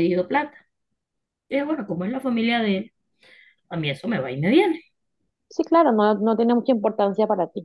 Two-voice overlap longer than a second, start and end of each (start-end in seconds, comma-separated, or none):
none